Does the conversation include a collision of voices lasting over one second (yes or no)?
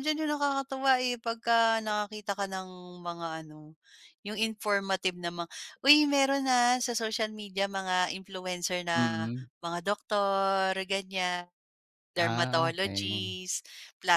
yes